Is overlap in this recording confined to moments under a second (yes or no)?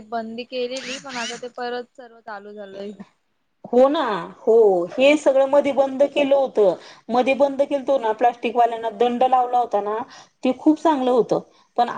yes